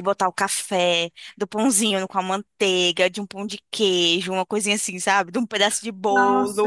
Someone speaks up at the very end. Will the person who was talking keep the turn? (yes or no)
no